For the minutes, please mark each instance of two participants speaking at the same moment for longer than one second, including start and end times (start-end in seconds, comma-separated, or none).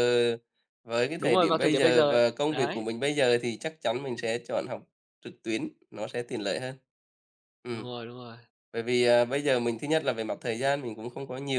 1.2-2.9